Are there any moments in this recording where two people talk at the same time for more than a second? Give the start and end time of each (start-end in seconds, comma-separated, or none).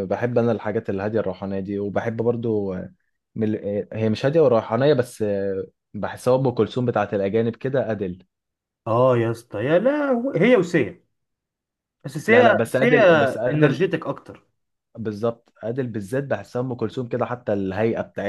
12.3-13.8